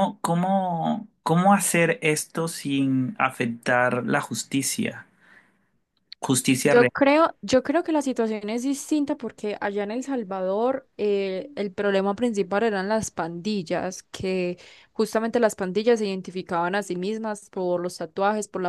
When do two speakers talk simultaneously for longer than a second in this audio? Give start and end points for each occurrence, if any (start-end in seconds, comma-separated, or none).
none